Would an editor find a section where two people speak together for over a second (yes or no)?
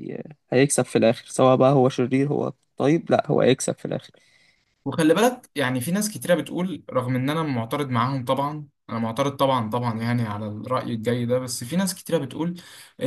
no